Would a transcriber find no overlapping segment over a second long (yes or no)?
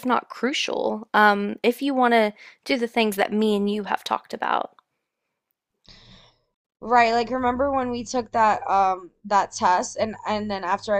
yes